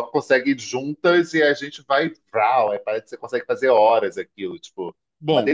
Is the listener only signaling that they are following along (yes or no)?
no